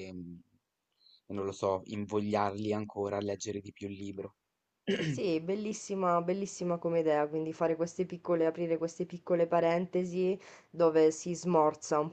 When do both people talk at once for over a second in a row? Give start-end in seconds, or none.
none